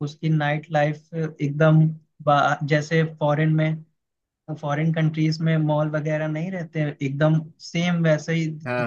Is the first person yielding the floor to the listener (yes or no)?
no